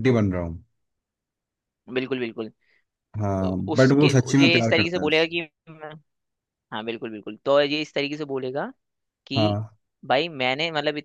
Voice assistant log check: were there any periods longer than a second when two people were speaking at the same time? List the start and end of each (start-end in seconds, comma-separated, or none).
3.4-5.3